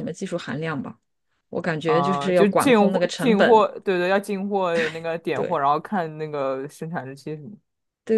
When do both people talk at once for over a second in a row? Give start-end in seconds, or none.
1.8-3.7